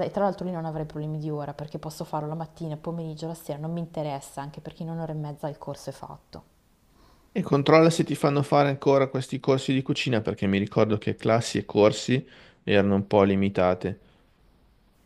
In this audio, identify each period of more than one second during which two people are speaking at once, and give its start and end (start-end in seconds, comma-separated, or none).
none